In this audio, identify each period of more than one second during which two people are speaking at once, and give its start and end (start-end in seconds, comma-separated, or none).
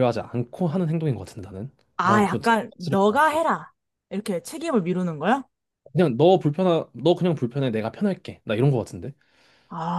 2.0-3.4